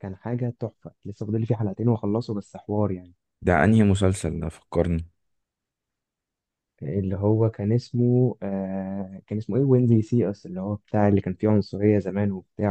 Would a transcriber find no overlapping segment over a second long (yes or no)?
yes